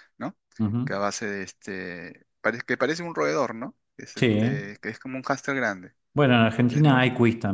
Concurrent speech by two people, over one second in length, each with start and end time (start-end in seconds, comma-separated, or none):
none